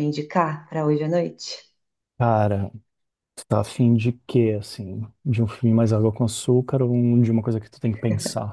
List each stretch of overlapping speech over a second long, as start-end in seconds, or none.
none